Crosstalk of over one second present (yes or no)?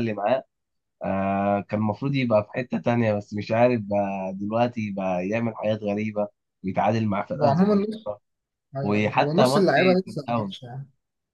yes